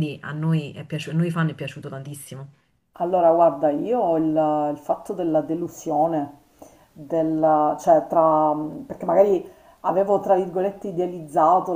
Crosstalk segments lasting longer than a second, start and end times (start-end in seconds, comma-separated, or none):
none